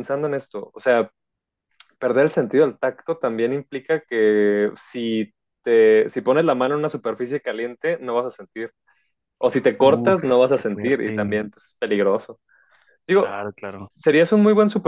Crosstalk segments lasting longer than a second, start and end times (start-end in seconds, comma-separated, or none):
9.8-11.4